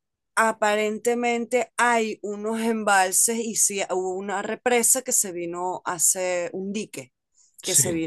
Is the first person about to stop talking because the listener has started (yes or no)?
no